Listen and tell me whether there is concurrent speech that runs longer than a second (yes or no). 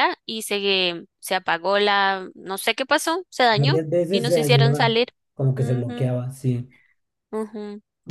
yes